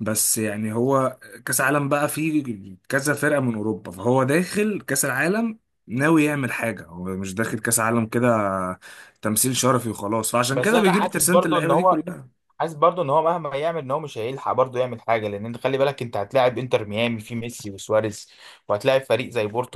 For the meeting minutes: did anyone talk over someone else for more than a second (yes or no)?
yes